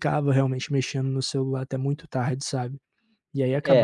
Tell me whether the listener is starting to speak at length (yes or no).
yes